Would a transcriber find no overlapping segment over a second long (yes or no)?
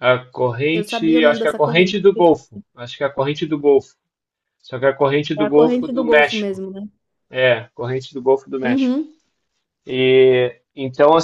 no